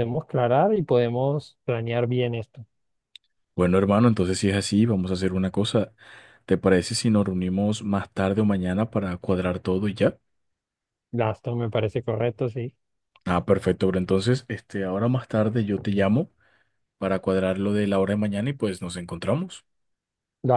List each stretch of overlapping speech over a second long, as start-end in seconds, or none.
none